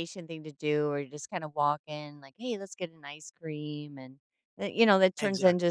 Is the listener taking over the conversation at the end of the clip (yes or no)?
no